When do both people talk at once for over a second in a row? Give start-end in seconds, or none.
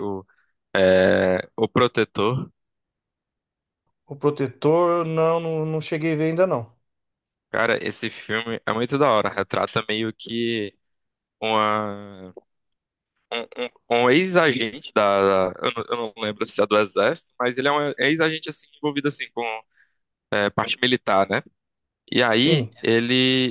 none